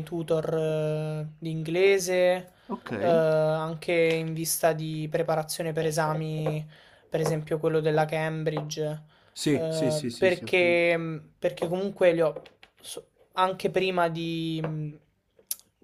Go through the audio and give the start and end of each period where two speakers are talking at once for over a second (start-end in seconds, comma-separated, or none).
9.5-10.8